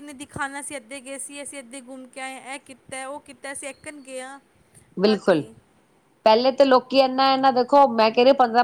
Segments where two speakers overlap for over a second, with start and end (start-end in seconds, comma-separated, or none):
none